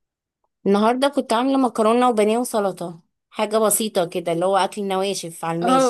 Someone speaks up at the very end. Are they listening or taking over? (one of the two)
taking over